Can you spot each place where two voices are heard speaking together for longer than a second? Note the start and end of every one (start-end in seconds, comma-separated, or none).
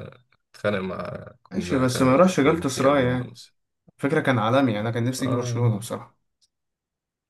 1.5-3.4